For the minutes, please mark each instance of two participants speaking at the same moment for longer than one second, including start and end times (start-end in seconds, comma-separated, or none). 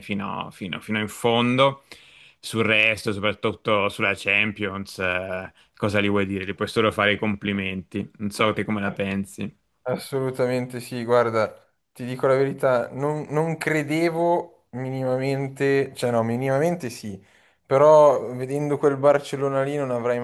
none